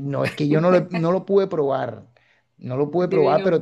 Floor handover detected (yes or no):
no